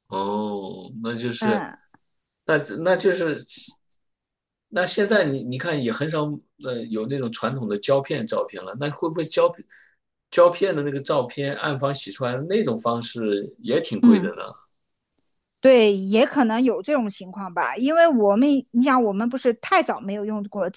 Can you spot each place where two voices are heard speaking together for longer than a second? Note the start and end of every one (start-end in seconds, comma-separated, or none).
none